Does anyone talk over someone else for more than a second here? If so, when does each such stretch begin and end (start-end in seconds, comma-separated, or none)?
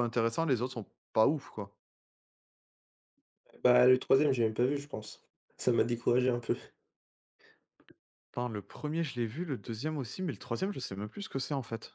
none